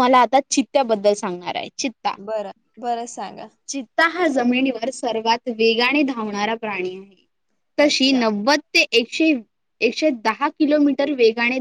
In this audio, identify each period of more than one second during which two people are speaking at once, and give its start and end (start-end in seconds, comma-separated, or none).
none